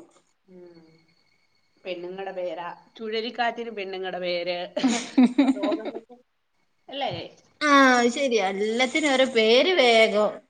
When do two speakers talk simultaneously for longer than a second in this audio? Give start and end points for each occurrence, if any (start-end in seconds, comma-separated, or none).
none